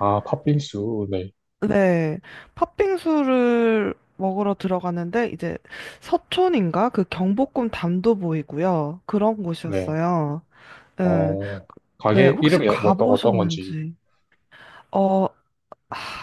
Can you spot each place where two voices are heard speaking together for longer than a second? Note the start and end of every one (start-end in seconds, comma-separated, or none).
12.1-13.8